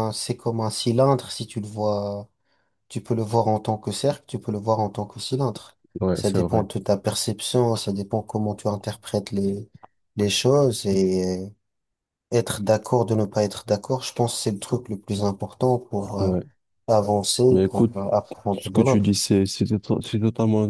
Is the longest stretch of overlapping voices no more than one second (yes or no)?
yes